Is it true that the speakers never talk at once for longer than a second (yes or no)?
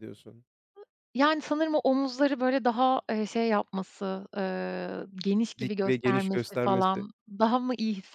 no